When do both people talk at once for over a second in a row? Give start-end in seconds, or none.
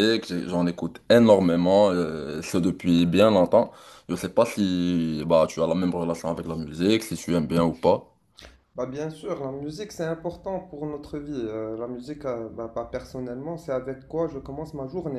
none